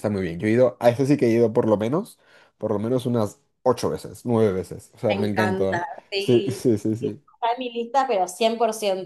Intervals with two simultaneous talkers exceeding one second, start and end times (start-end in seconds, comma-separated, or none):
5.1-7.2